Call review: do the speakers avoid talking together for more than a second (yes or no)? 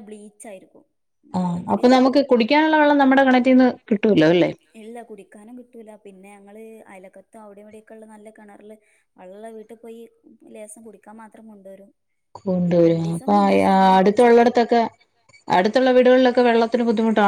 yes